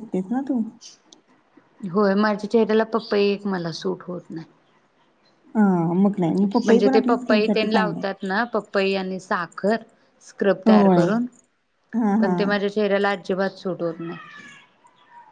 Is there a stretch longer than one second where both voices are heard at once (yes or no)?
yes